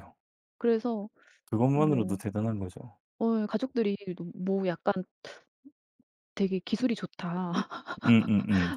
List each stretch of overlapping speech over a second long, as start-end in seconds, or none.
none